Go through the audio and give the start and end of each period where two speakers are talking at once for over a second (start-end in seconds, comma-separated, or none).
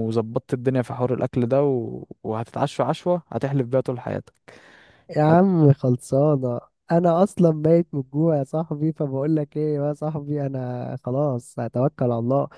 none